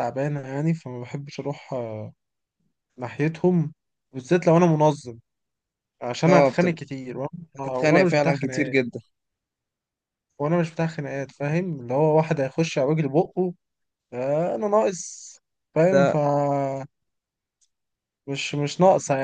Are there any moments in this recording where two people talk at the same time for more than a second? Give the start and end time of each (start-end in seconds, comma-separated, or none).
7.6-8.8